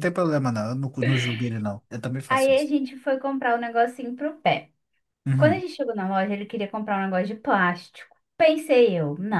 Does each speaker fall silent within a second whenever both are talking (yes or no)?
yes